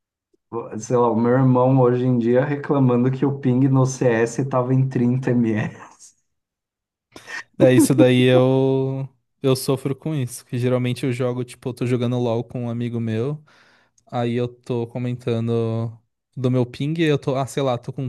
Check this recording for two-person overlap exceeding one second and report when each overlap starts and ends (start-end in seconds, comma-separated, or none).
none